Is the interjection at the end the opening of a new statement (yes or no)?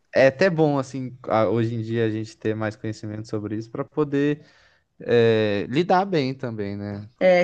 yes